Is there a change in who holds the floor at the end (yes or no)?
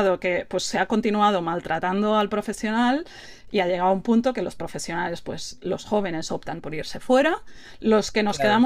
no